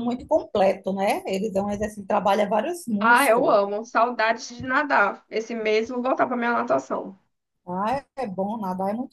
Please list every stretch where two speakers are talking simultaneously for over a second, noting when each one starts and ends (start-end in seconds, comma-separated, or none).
none